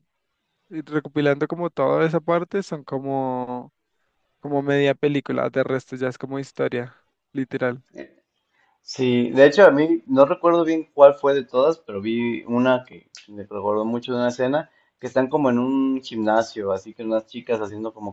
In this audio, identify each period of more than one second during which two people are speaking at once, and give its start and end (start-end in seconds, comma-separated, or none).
none